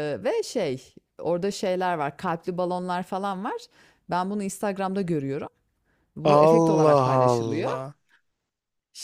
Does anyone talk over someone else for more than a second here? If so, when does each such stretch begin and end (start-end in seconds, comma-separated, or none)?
6.2-7.7